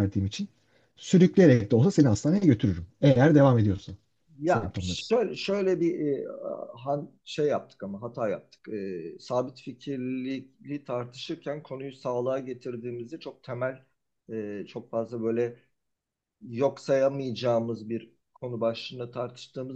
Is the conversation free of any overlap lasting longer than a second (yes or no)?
yes